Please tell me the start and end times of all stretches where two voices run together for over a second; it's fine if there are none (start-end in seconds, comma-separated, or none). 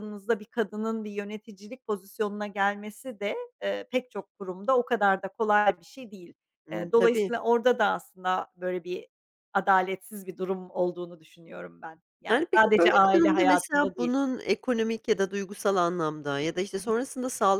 12.3-14.2